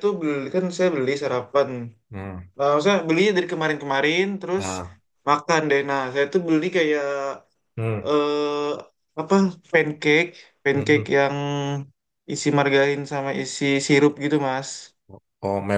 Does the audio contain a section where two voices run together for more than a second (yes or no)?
no